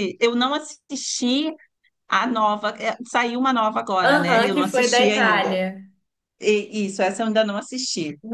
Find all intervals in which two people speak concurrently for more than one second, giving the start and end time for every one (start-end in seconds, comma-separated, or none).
4.0-5.6